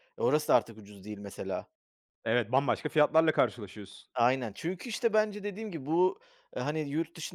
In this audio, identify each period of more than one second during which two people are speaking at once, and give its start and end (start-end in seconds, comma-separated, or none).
none